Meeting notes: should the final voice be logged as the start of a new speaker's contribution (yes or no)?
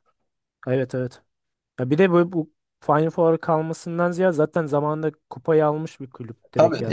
yes